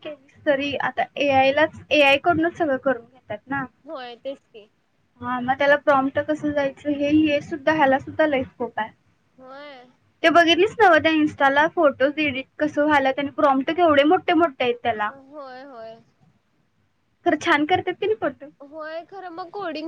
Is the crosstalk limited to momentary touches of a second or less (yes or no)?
yes